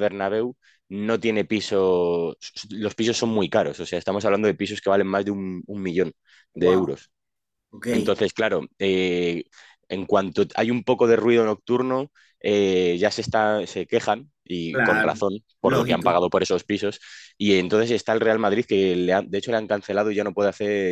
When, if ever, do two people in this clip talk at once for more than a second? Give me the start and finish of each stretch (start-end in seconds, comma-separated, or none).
14.7-16.1